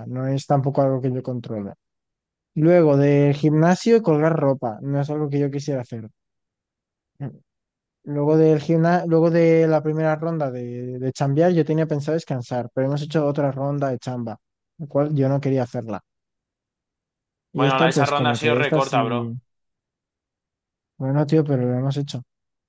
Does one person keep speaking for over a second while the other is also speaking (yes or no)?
yes